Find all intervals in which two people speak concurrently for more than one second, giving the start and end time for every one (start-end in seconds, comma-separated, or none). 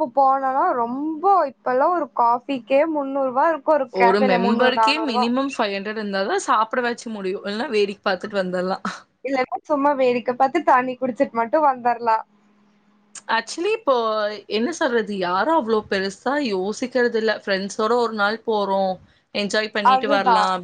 none